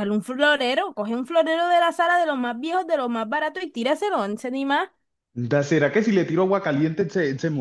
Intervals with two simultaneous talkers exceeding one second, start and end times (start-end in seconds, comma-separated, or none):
none